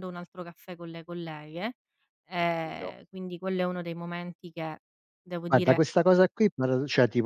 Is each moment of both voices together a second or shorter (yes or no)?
yes